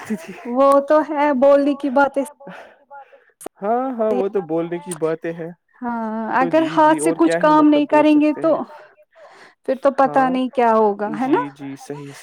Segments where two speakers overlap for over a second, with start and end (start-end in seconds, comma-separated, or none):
10.1-11.4